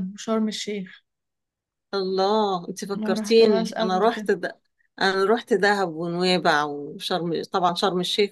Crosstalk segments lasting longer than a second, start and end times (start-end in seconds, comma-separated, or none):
2.9-4.3